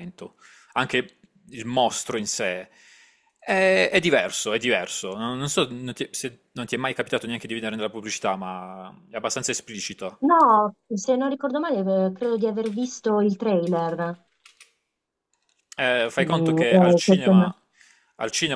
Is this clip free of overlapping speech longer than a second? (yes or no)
no